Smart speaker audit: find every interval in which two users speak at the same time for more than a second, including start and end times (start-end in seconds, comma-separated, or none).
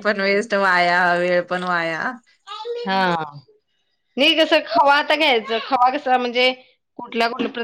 none